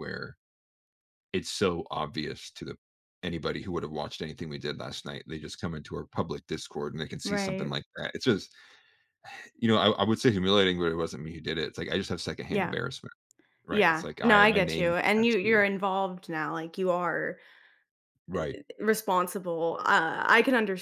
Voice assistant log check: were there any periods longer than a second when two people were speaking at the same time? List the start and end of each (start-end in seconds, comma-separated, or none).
13.7-15.7